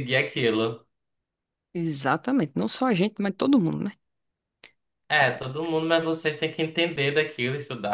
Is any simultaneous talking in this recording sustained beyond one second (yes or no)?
no